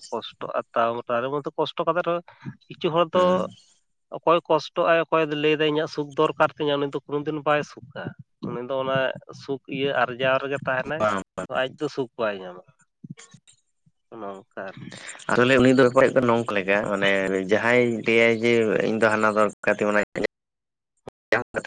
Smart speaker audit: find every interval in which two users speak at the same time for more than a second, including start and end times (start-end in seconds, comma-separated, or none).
none